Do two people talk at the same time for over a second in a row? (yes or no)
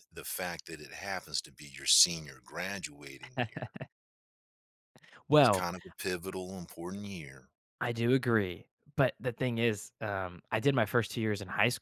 no